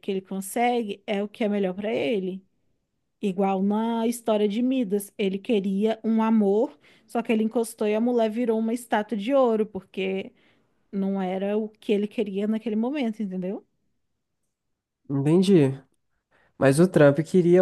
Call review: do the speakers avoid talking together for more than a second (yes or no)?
yes